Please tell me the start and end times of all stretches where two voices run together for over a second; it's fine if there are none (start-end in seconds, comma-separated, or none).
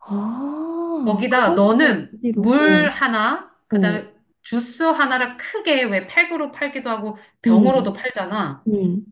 1.0-3.1